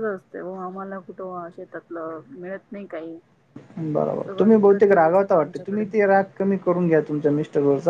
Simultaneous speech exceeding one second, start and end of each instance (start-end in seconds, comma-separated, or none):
4.3-5.8